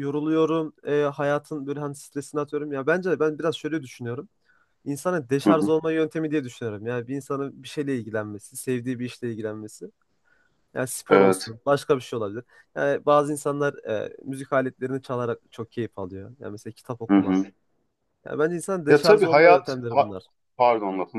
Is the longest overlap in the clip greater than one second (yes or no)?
yes